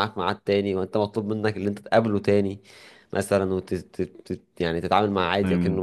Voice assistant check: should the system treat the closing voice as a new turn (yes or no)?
no